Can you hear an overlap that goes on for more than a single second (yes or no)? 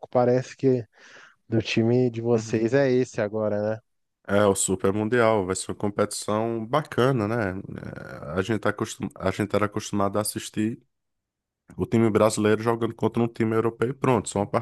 no